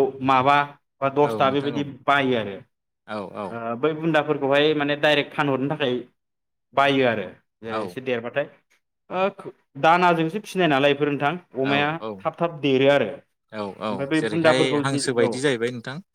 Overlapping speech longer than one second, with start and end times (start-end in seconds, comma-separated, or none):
13.5-15.3